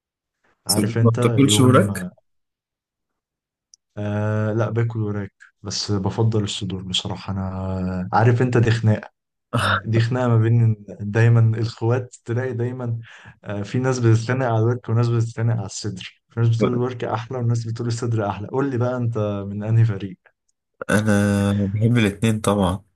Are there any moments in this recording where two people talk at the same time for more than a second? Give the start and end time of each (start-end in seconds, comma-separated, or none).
0.7-2.1